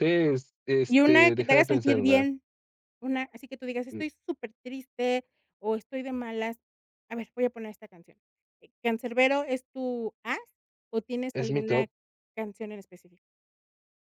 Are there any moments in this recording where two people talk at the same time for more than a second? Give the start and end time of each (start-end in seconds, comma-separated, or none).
0.9-2.3